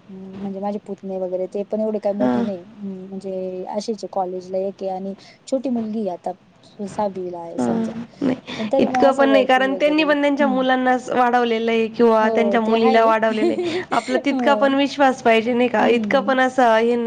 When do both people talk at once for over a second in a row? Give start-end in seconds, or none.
8.8-10.6